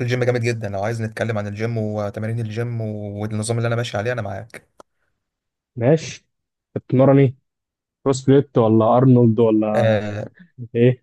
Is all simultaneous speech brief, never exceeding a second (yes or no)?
yes